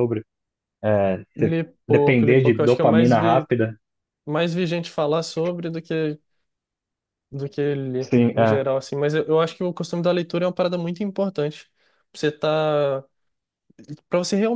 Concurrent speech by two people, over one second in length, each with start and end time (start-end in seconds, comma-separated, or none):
1.4-3.5